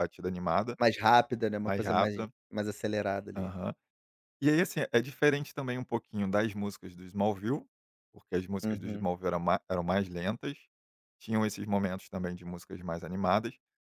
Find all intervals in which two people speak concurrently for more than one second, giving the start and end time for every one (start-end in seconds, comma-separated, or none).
none